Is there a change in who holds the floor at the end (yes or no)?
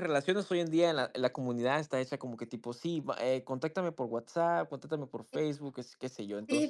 yes